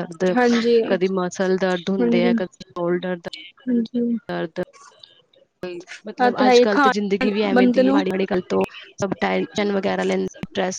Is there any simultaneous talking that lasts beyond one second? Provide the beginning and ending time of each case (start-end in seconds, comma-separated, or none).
6.1-8.0